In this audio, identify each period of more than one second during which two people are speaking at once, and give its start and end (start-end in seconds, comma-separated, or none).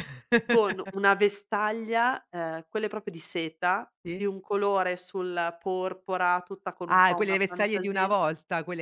6.9-8.1